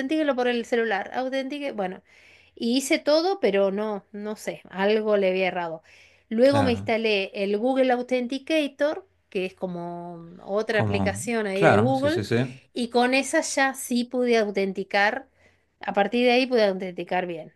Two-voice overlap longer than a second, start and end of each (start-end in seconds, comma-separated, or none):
10.7-12.2